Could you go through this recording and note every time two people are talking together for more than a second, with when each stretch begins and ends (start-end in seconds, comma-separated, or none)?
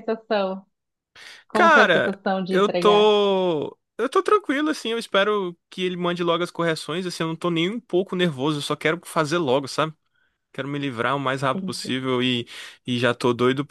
1.5-3.1